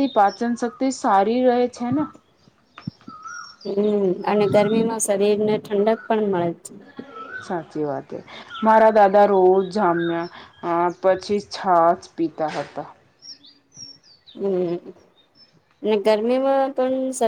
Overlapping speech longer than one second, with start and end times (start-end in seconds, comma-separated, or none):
none